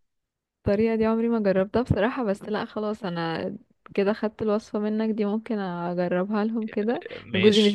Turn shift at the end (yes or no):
no